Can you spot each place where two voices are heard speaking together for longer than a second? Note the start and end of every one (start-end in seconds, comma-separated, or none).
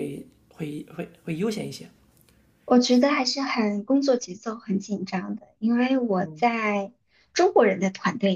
none